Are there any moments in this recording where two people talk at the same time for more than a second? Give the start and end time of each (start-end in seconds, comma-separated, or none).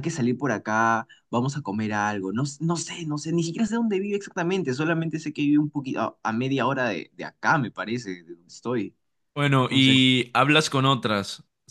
none